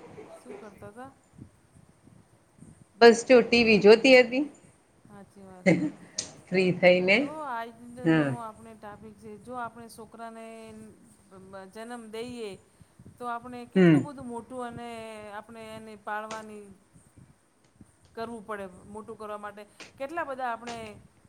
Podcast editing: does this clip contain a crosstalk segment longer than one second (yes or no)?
no